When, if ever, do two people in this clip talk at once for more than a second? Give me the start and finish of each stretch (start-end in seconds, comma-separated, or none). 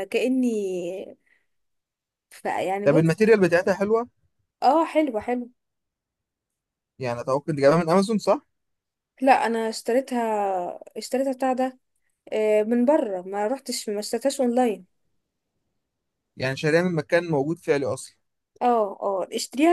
none